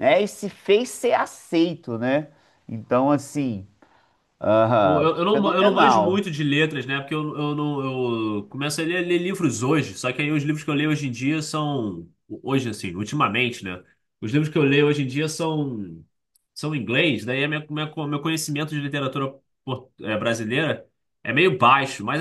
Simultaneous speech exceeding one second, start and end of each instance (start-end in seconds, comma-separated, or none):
4.8-6.2